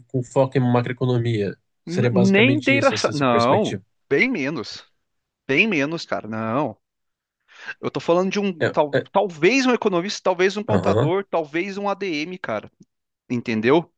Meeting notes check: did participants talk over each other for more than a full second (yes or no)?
yes